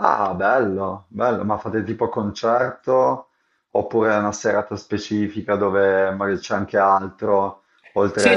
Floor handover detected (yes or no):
yes